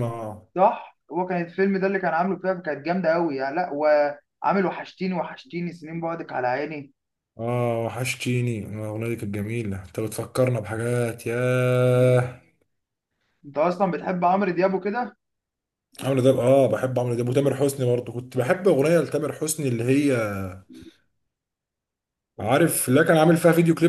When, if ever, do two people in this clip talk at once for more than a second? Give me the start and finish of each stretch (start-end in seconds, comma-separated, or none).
none